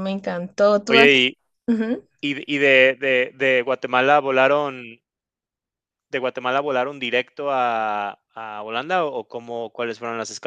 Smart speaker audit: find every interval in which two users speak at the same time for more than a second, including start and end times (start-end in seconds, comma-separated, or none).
none